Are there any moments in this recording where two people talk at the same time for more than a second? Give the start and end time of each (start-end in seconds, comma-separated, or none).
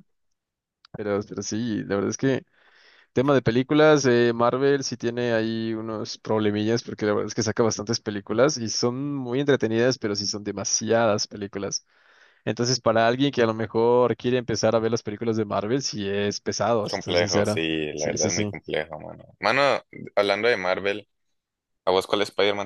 16.9-18.6